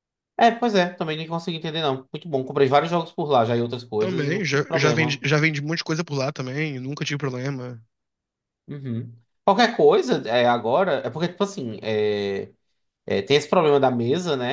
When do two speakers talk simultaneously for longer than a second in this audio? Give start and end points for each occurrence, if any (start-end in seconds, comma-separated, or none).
4.0-5.2